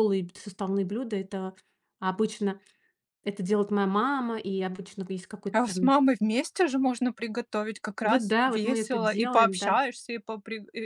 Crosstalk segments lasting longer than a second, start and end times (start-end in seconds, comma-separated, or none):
8.0-9.8